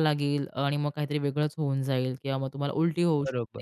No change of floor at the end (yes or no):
no